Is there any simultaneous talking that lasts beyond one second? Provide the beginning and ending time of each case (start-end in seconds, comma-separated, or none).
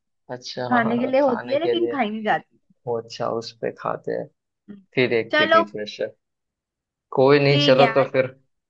0.7-2.0